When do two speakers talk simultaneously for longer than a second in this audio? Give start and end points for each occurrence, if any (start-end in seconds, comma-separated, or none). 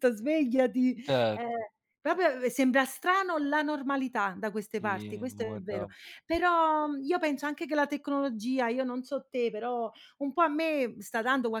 4.7-5.9